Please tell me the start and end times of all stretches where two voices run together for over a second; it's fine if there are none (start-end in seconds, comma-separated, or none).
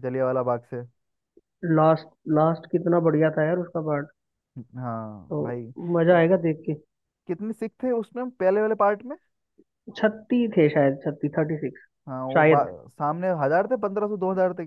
none